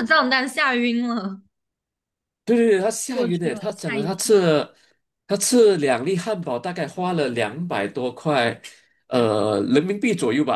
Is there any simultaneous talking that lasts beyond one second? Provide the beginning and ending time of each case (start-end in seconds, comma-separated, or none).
3.1-4.5